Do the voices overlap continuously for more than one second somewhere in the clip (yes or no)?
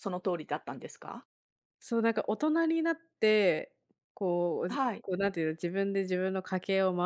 no